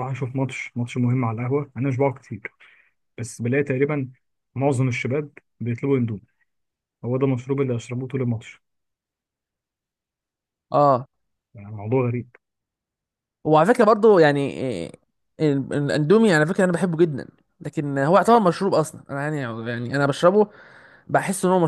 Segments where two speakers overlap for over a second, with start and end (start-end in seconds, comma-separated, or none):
none